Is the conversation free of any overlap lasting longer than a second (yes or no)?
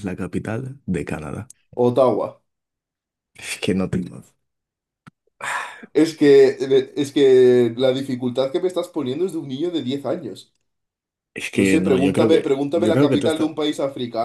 no